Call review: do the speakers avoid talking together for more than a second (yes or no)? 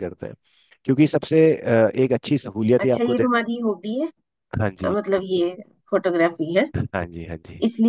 yes